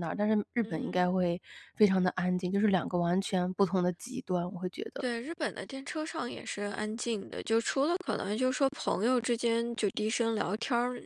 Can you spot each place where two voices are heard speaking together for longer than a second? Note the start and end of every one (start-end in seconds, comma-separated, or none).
none